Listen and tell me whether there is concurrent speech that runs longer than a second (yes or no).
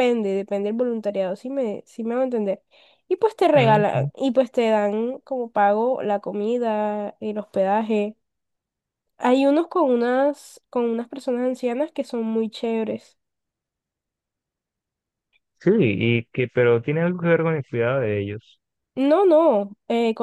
no